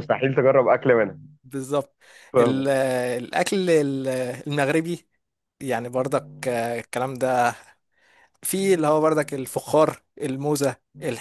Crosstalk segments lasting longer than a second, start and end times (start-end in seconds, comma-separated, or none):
none